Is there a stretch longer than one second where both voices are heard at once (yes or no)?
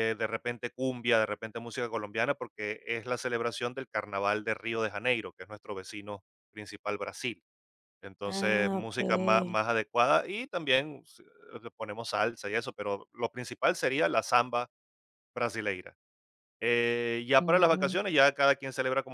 yes